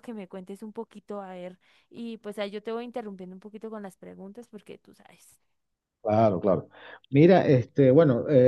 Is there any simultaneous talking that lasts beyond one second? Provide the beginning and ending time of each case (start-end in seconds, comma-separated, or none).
none